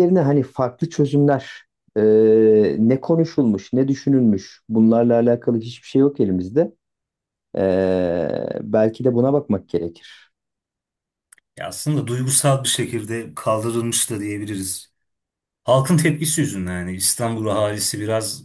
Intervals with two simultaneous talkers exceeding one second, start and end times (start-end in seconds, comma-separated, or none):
none